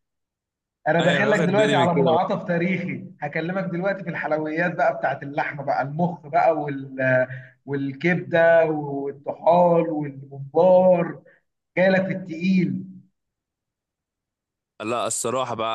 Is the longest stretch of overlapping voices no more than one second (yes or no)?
no